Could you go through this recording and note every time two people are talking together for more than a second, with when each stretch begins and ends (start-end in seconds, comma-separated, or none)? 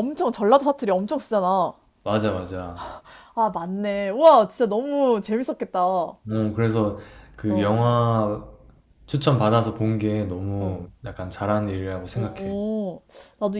none